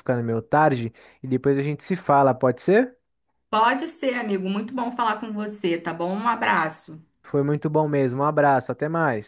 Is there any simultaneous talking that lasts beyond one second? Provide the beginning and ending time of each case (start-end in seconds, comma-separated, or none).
none